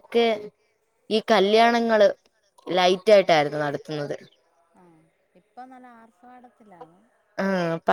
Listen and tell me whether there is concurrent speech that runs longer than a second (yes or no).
no